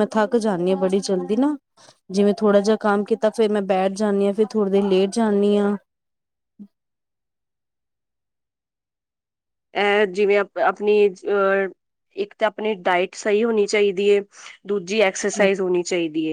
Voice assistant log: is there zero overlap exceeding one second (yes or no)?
yes